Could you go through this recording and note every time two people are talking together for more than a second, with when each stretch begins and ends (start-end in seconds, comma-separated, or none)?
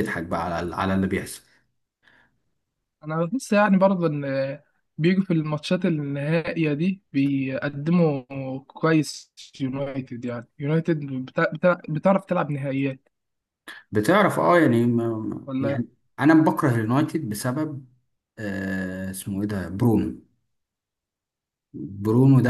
none